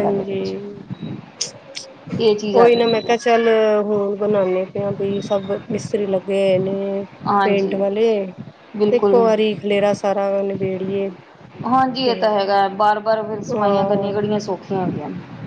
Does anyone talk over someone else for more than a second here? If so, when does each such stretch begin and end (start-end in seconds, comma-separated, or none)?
none